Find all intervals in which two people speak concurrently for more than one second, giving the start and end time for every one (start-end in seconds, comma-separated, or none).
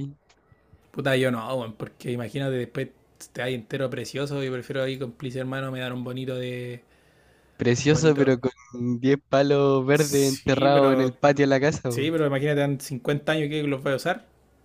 9.9-11.2